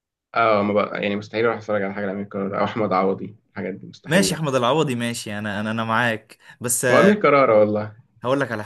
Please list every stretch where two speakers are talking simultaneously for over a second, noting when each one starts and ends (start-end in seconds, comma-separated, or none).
none